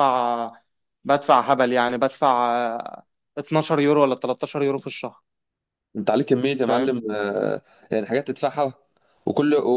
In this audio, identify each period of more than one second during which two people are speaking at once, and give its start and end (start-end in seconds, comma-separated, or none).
none